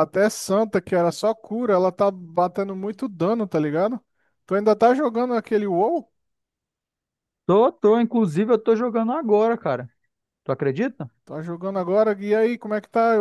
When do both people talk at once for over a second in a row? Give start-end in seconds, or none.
none